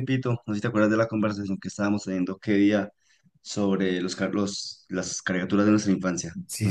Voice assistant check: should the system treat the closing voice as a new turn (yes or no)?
yes